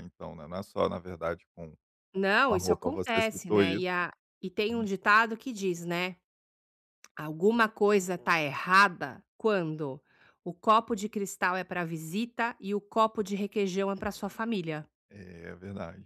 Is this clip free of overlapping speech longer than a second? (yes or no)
no